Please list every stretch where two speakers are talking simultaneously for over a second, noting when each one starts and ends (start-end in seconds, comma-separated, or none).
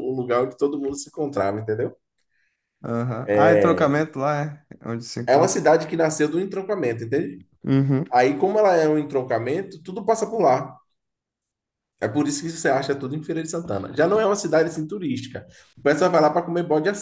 none